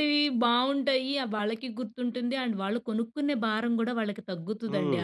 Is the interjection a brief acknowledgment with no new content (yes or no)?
no